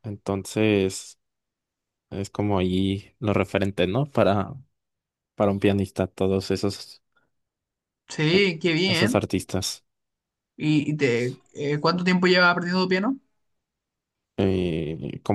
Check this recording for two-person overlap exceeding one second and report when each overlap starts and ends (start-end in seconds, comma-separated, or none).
none